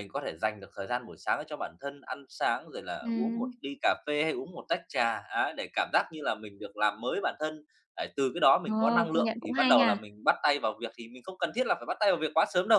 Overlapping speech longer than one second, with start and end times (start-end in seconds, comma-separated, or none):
8.7-10.0